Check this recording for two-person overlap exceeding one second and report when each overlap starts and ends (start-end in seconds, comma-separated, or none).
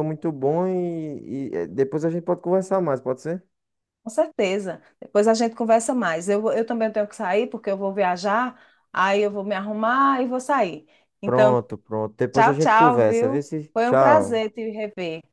12.3-14.4